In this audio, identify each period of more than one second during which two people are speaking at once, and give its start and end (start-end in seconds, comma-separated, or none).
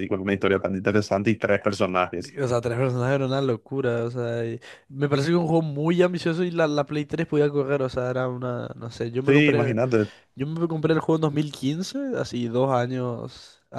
none